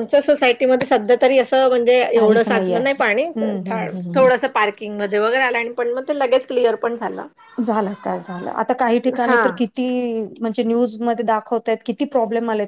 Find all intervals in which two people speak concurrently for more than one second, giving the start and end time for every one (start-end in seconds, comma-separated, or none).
2.1-4.2